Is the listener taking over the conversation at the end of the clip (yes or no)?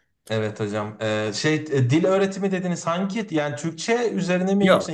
yes